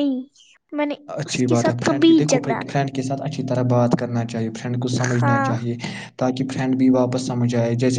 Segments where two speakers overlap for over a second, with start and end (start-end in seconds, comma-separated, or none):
1.2-2.8